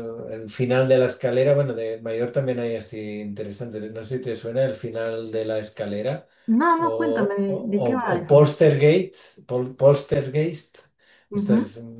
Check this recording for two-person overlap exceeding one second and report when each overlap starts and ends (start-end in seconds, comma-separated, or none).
6.8-8.5